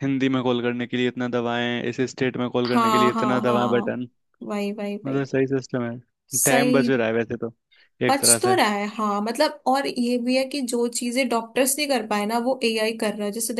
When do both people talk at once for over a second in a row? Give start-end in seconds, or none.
2.6-4.0